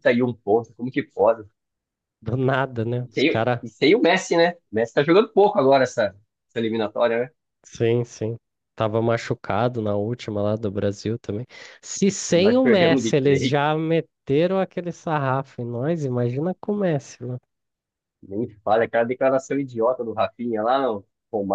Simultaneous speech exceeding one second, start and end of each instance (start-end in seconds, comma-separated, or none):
12.3-13.6